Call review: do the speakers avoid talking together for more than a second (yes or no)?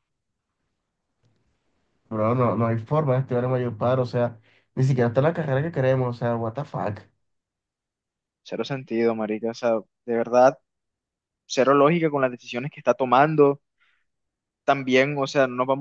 yes